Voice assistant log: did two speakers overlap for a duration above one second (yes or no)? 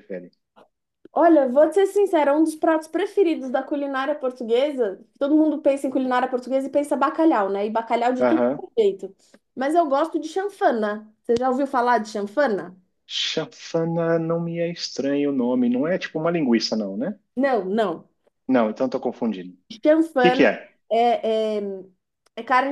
no